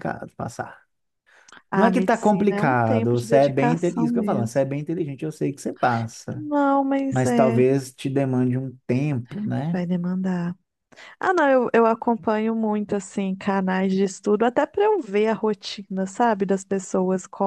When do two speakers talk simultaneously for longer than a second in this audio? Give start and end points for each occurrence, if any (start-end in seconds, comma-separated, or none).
1.7-4.6